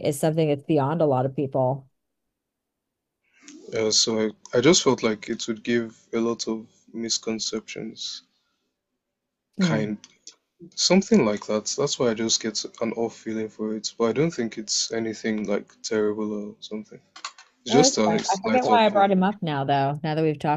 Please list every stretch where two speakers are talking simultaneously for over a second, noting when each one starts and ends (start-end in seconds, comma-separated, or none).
17.7-19.2